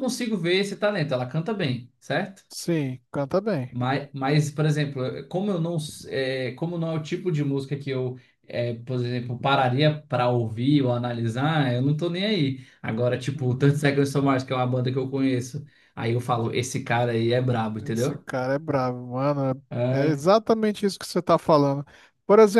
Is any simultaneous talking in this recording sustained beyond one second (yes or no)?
no